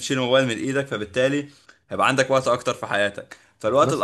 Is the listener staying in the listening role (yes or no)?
yes